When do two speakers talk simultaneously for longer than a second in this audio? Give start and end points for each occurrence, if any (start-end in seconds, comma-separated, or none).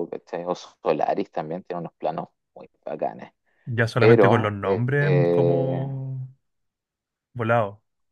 4.0-5.9